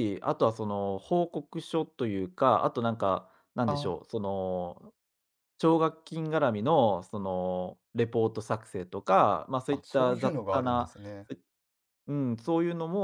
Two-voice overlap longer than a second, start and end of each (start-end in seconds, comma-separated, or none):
9.7-10.9